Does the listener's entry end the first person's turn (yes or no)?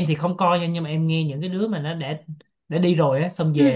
no